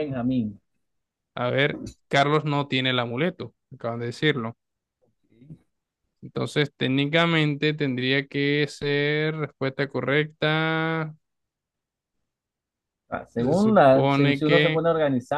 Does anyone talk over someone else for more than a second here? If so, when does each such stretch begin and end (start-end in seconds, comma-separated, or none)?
13.3-14.8